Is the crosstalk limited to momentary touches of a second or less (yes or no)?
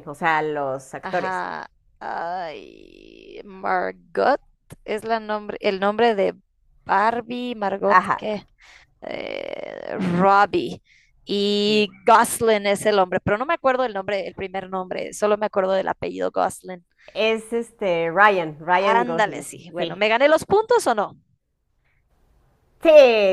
no